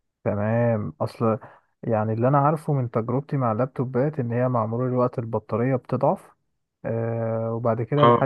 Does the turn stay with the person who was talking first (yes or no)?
yes